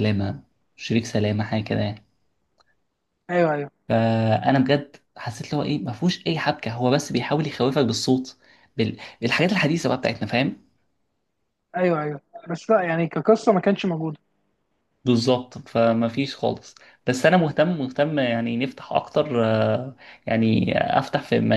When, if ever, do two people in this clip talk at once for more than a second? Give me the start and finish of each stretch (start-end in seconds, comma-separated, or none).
none